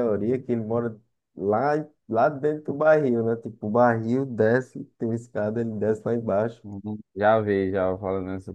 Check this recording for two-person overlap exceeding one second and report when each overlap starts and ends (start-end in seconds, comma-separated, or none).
none